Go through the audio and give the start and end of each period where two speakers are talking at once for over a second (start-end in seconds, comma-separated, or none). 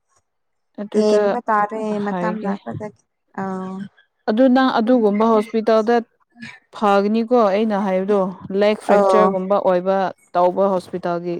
none